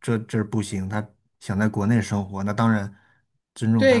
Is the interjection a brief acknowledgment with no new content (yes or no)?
no